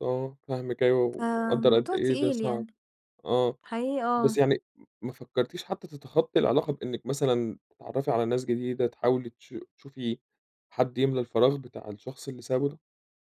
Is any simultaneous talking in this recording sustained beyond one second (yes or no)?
yes